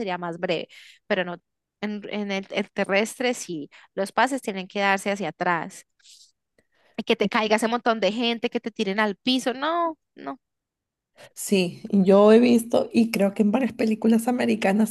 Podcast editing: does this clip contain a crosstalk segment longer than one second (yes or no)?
no